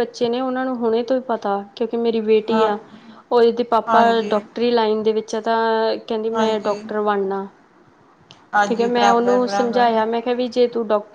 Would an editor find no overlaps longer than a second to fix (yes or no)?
no